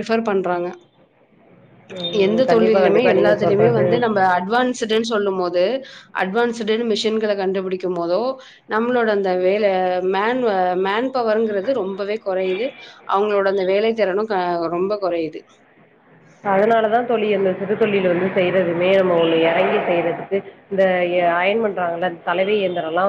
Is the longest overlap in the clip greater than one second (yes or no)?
yes